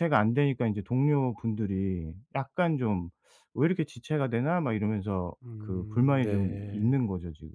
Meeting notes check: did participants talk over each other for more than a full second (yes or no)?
yes